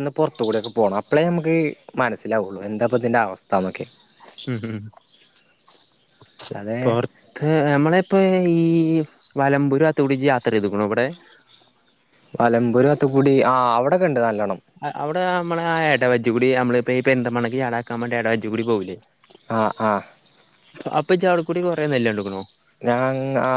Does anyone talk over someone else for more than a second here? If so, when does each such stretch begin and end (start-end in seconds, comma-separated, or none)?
none